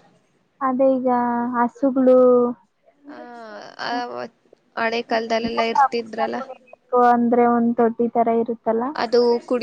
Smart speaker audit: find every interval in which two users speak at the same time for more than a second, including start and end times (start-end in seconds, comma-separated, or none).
none